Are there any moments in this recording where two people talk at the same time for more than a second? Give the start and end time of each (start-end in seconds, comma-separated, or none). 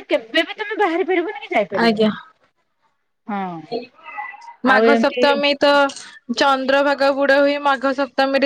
none